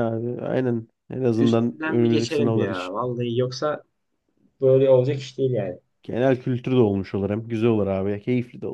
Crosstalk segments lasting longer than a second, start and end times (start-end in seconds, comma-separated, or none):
1.3-3.0